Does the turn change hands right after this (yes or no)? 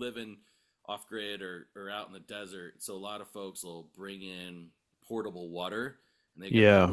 no